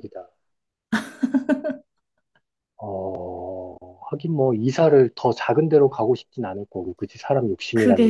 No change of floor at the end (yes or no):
no